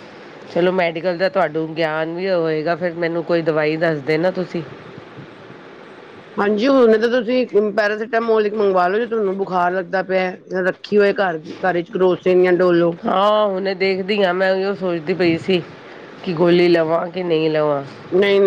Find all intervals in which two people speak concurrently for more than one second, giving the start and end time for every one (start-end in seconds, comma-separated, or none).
none